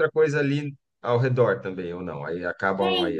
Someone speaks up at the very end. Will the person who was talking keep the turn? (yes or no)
no